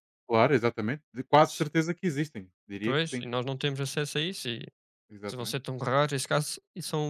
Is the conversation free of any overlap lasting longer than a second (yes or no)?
yes